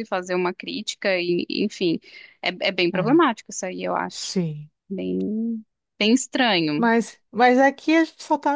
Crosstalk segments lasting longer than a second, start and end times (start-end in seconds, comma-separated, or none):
none